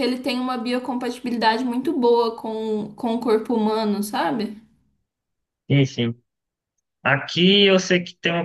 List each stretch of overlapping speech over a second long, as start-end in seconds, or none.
none